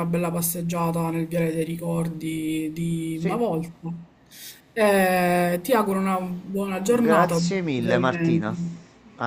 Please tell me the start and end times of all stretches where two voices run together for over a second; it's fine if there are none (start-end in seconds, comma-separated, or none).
6.8-8.5